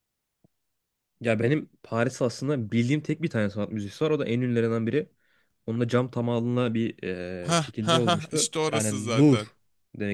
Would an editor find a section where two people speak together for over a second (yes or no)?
yes